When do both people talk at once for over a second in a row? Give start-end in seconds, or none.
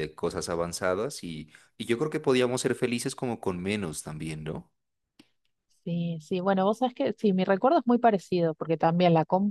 none